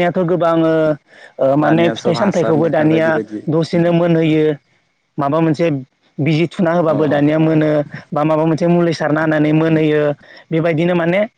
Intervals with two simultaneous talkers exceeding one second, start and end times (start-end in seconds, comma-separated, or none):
1.6-3.1